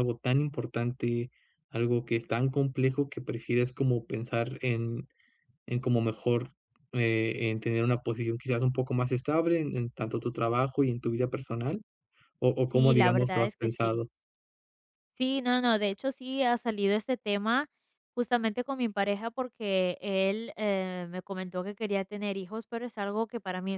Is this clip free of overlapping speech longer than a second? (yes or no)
no